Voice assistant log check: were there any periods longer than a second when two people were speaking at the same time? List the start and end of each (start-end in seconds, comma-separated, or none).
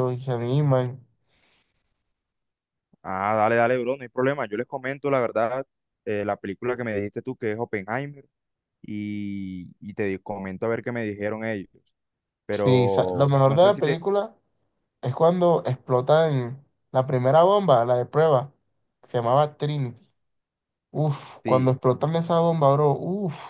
12.5-14.0